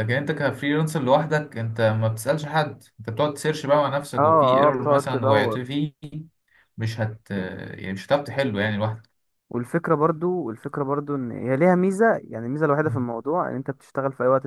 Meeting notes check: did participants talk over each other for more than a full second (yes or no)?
yes